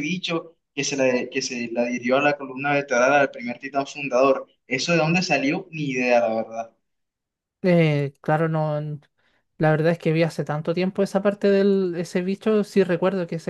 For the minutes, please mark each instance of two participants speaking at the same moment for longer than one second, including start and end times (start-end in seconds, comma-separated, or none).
none